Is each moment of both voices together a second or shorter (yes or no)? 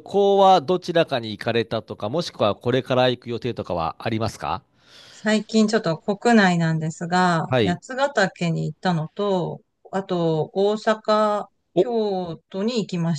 yes